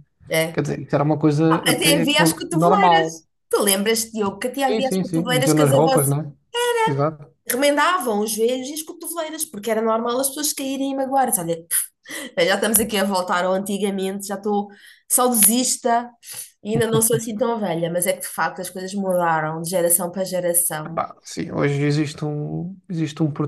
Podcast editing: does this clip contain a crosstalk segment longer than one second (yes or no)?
yes